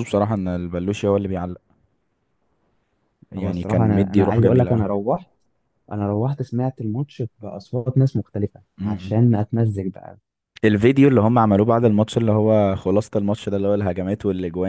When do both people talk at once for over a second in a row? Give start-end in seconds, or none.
3.4-4.8